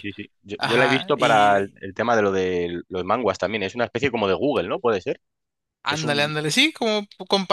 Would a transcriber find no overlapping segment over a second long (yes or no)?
no